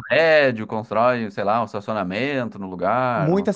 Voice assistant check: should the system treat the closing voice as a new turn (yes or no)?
yes